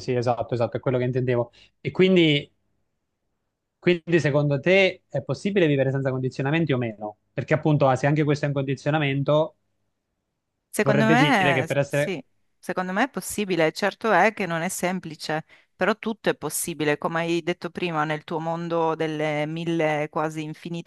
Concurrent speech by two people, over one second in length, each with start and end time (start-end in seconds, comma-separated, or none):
10.8-12.2